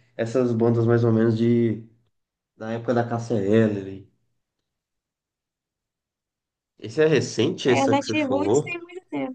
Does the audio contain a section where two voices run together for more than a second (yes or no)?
yes